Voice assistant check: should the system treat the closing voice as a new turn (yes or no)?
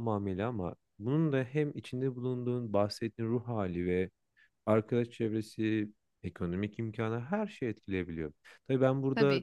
no